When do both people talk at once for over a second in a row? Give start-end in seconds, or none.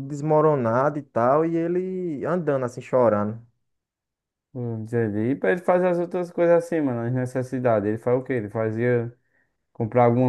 none